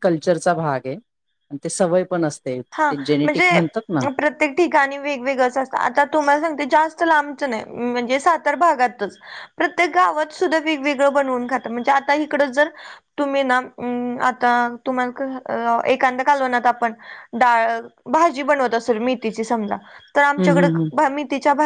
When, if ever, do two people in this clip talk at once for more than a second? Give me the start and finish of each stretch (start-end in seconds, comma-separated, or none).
none